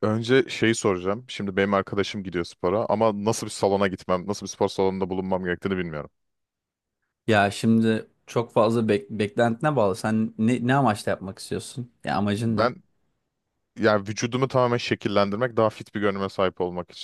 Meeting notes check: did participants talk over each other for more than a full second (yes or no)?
no